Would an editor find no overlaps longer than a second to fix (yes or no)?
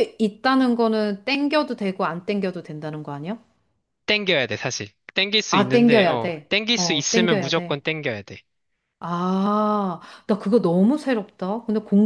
no